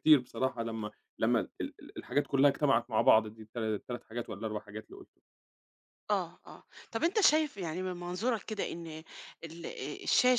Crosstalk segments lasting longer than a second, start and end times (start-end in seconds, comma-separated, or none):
none